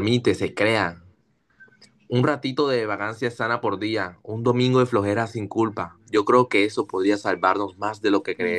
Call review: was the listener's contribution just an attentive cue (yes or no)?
no